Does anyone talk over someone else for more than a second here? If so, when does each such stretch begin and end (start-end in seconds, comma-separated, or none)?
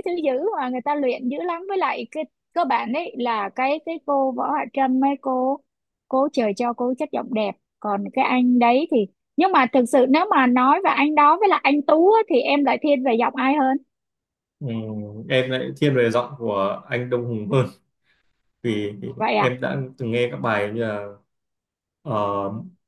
none